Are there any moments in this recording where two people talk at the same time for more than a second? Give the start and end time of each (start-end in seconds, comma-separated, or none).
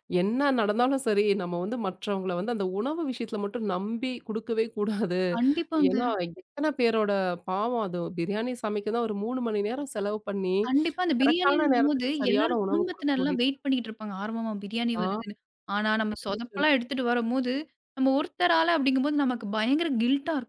11.2-13.4